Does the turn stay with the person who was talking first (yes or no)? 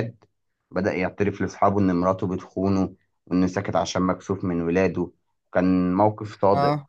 yes